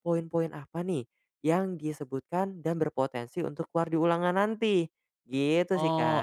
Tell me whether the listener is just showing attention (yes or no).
no